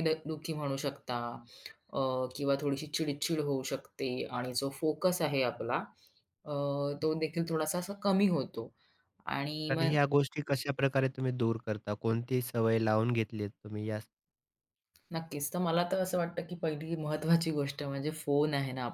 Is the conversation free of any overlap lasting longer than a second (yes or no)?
yes